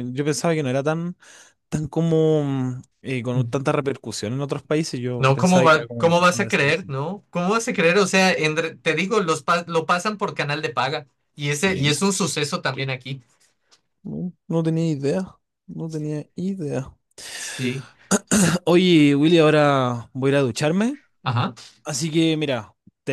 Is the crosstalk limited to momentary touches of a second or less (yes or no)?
no